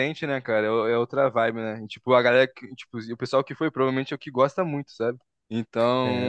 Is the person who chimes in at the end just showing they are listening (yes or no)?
yes